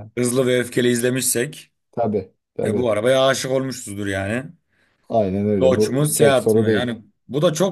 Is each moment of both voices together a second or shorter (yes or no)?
no